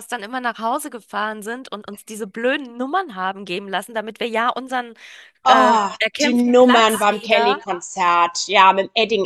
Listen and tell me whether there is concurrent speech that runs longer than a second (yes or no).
yes